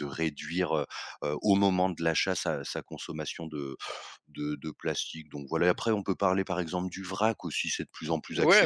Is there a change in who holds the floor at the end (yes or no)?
yes